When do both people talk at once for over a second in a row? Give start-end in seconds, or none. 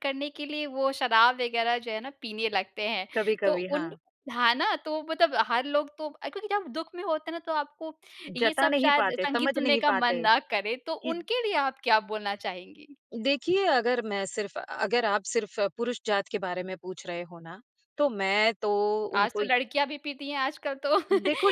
8.4-10.2